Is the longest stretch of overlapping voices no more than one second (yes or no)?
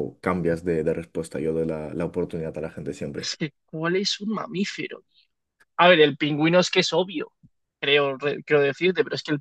yes